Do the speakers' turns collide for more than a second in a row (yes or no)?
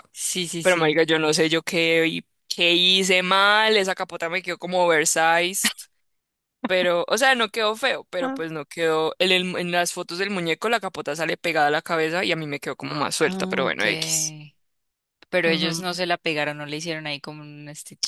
no